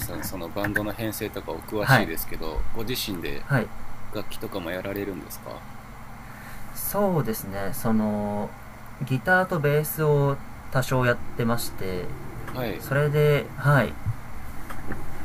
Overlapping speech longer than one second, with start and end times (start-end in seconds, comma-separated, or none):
none